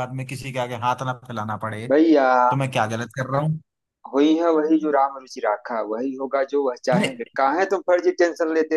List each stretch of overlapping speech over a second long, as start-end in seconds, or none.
none